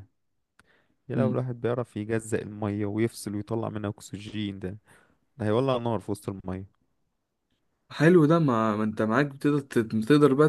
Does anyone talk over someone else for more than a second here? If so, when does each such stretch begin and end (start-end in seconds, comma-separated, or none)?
none